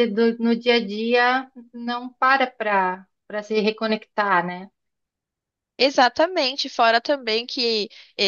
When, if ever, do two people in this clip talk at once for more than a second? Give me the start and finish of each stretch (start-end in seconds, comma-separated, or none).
none